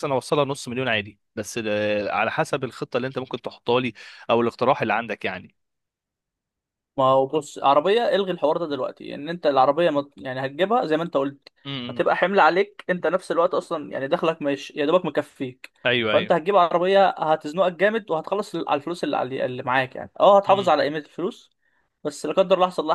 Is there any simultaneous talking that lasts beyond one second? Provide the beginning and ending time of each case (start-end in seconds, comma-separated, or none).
none